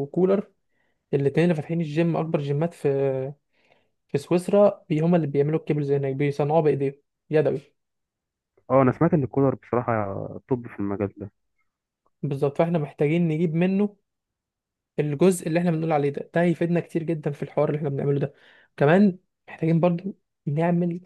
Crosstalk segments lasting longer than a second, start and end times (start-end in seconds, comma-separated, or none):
none